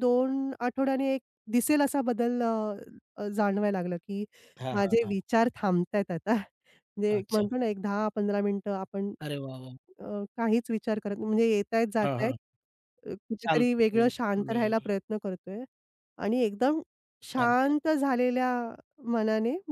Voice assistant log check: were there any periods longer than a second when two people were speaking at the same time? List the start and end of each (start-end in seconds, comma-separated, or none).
13.4-14.9